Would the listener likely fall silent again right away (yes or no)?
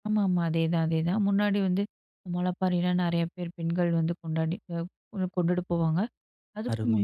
yes